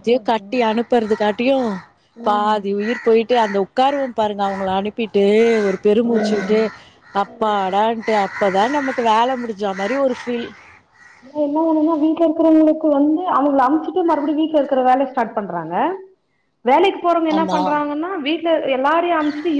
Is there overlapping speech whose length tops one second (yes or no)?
no